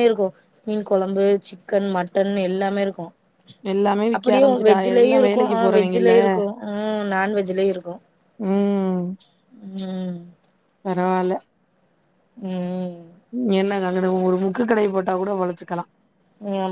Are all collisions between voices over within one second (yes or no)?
no